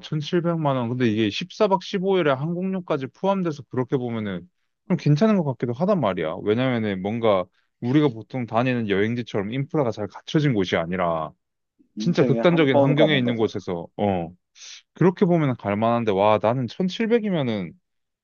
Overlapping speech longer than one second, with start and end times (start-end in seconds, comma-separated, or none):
12.0-13.5